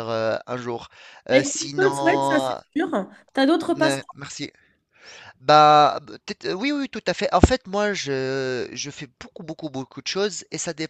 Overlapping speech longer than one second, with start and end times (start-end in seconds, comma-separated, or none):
1.3-2.6